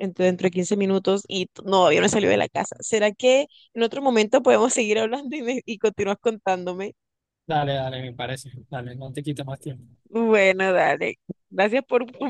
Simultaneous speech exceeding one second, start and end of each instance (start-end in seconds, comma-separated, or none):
none